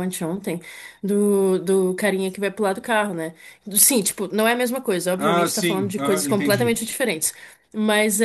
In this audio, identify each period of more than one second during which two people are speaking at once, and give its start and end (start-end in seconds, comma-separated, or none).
5.2-6.8